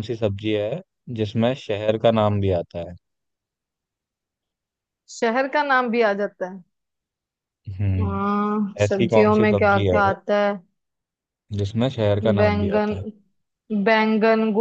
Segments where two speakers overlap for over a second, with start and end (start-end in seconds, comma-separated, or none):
8.0-10.0